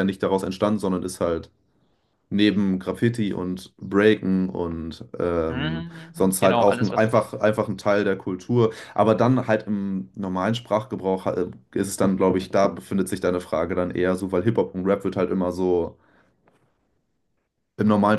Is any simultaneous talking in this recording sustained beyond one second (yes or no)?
yes